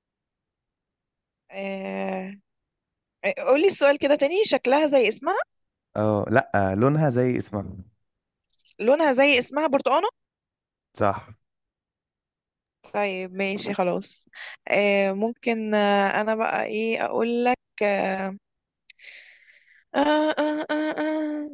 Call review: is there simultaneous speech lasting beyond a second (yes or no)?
no